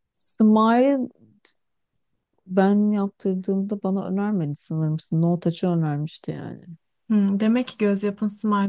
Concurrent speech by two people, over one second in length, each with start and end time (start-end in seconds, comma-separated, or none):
none